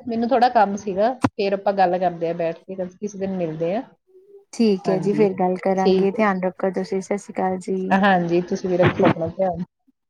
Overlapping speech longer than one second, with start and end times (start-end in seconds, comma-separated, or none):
4.8-6.3